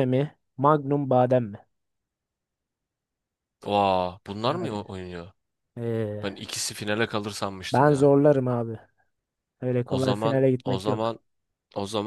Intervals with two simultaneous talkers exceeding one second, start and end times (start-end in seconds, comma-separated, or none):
9.8-11.1